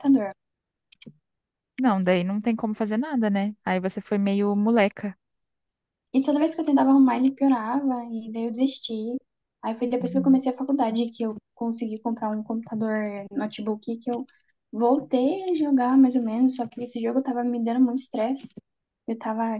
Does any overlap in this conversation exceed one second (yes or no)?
no